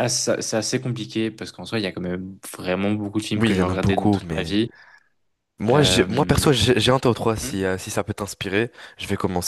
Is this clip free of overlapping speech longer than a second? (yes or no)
no